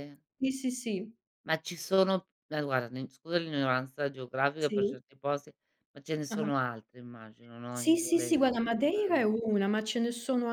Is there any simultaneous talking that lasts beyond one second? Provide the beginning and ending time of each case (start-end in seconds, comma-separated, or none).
7.7-9.3